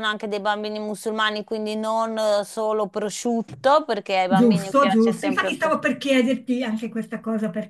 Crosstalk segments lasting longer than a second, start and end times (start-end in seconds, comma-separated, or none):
4.3-5.8